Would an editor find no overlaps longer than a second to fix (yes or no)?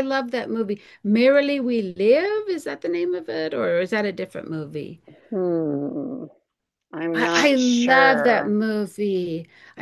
no